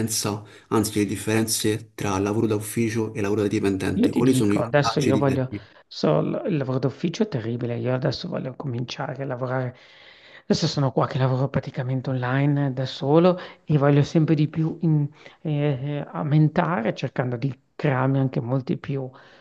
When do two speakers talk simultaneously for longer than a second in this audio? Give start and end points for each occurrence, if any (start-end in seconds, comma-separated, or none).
3.9-5.4